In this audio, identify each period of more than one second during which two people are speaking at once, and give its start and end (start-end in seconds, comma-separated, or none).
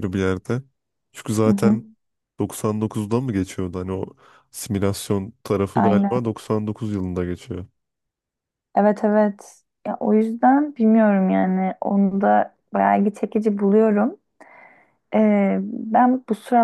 none